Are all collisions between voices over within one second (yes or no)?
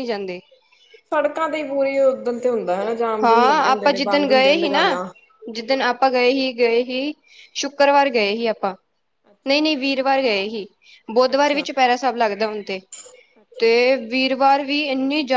no